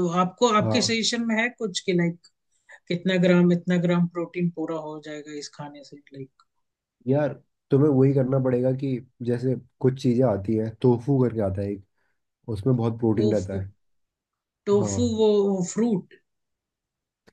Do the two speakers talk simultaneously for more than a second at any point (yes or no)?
no